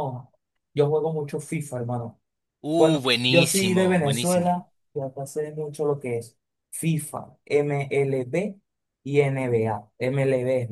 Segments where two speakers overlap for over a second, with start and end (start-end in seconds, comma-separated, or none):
2.8-4.6